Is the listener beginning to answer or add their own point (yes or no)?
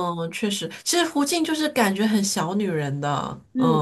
yes